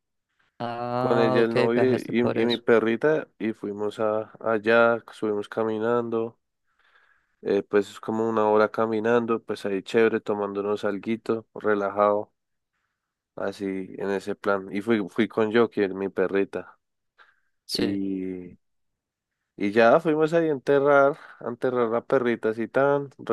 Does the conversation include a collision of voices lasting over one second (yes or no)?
yes